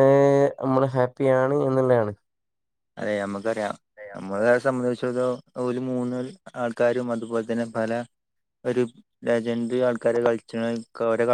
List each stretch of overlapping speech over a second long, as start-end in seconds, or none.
none